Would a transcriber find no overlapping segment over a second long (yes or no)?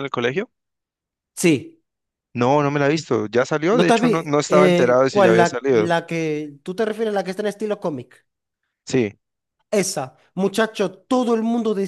no